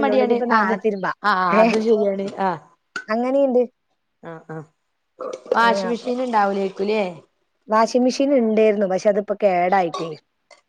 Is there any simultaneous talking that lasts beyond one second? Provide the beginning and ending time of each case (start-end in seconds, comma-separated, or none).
none